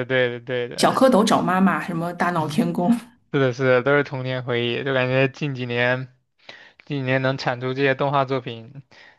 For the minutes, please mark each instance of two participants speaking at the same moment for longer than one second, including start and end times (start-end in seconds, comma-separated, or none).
none